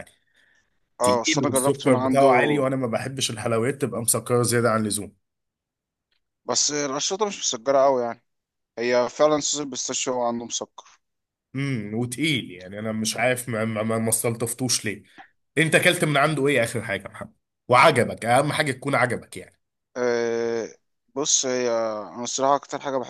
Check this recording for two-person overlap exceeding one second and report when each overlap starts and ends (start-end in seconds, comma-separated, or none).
1.0-2.3